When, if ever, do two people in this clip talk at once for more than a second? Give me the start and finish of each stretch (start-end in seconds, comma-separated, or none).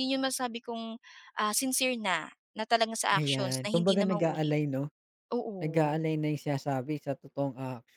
3.1-4.6